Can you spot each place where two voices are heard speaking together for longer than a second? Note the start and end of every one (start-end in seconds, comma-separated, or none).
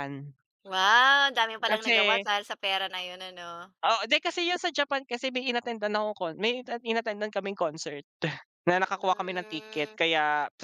8.7-10.0